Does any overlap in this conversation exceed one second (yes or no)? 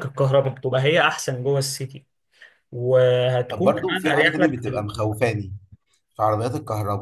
yes